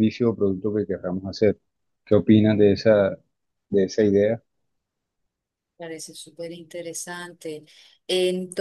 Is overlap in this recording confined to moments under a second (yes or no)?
yes